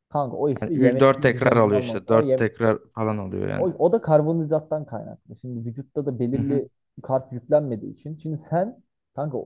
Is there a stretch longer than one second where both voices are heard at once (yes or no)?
yes